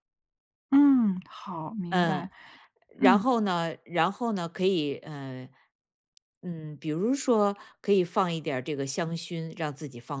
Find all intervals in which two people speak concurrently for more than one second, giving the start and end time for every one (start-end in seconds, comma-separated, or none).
none